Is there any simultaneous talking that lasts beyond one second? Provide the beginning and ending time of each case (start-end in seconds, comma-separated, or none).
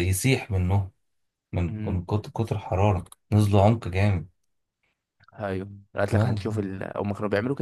none